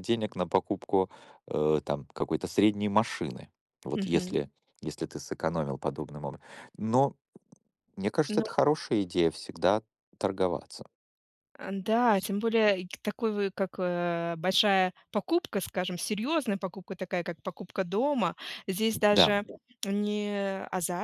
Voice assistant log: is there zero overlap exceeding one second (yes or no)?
yes